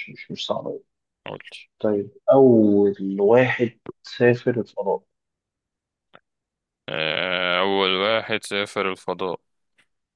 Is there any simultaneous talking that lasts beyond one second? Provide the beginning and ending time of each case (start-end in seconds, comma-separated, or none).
none